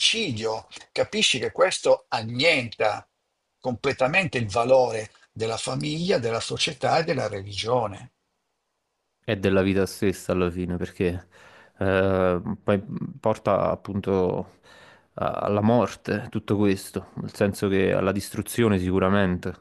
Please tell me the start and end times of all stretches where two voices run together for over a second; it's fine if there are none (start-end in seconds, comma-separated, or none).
none